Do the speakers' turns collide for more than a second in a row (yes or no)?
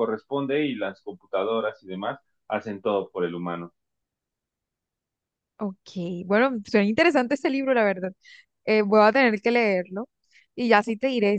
no